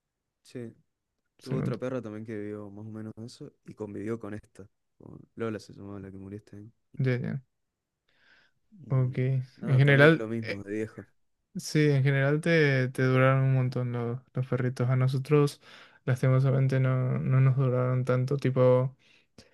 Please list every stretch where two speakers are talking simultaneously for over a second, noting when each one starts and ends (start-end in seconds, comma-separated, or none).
8.9-10.7